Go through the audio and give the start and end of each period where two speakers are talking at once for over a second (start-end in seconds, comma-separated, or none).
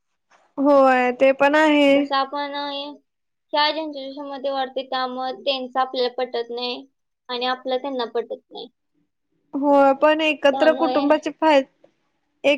none